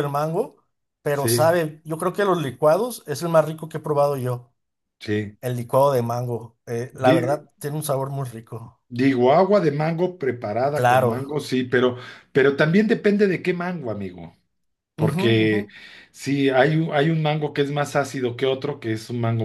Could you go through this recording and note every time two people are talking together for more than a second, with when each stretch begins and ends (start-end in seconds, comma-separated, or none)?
none